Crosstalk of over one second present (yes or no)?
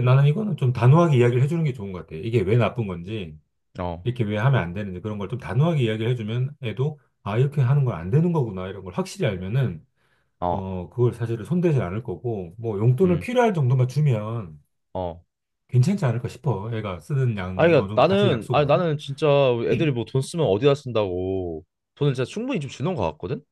yes